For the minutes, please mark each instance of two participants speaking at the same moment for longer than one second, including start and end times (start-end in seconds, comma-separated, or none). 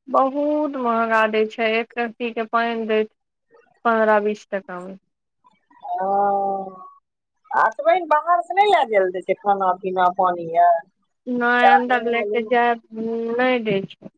none